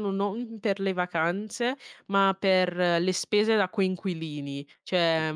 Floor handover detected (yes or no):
no